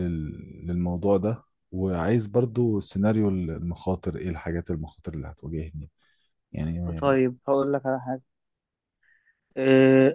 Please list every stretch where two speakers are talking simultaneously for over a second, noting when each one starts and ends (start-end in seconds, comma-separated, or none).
none